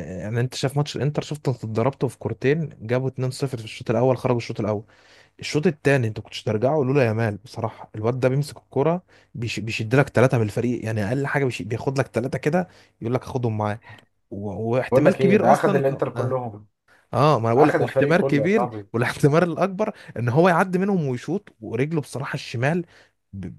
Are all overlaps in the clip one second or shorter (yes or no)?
no